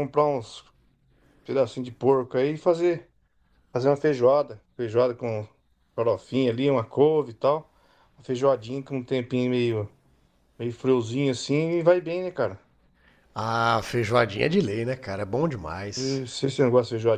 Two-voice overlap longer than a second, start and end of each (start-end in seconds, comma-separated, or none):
none